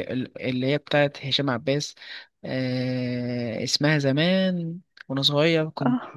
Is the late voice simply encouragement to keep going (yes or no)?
yes